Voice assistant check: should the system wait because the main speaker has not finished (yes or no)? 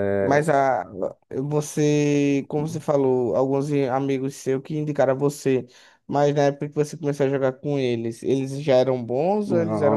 no